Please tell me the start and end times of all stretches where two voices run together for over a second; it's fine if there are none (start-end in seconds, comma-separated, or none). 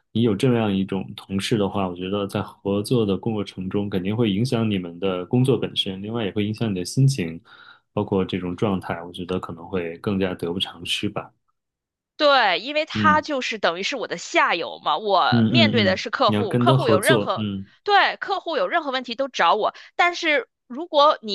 15.3-17.5